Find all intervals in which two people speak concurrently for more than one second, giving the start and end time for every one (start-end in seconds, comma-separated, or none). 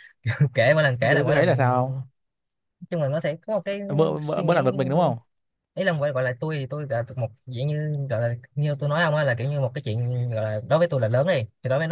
none